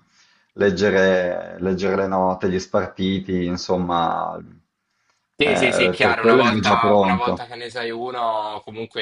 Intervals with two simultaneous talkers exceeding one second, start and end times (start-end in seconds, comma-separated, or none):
5.4-7.5